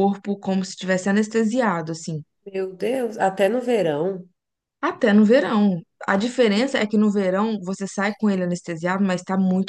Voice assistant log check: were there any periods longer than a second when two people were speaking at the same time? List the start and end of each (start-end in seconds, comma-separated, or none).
none